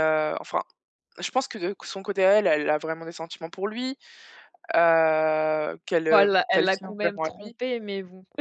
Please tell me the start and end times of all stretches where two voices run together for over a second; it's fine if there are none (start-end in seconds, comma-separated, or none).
6.1-7.5